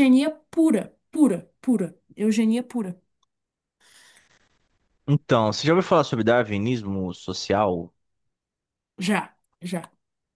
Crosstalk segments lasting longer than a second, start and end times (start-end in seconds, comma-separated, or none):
none